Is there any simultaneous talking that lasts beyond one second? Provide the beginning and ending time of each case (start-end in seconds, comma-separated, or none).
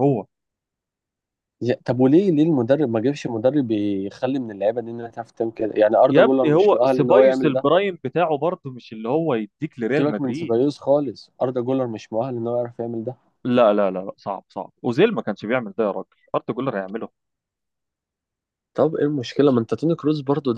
6.1-7.7